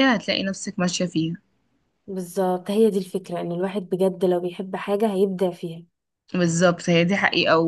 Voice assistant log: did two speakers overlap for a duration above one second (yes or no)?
no